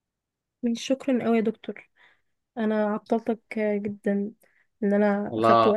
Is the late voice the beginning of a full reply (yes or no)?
yes